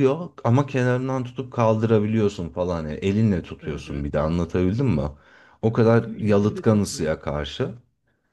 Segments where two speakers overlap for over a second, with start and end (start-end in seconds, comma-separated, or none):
5.7-7.1